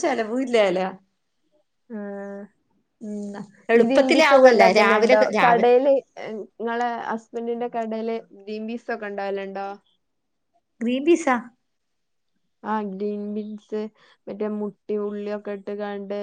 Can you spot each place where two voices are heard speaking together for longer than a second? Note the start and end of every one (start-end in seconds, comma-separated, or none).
3.8-5.7